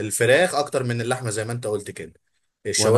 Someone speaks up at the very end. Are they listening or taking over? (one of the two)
listening